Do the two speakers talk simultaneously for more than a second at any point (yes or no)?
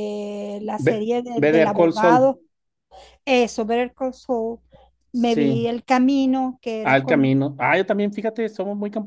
yes